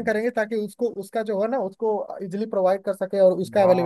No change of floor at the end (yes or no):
no